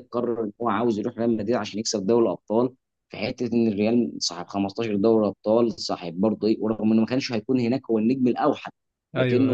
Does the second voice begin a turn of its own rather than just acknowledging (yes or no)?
no